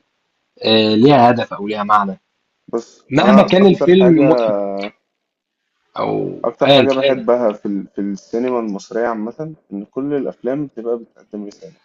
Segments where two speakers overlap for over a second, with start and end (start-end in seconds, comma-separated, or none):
3.1-4.5